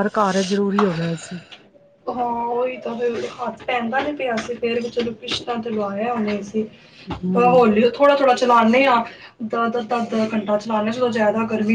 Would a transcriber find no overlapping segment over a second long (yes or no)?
yes